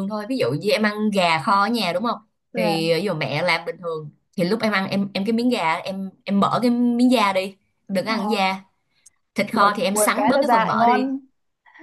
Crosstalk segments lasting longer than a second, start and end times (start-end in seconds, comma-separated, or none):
9.5-11.1